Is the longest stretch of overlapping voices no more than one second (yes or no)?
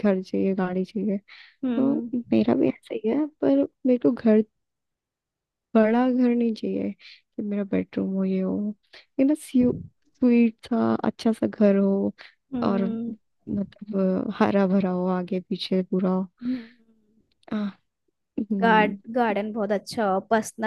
yes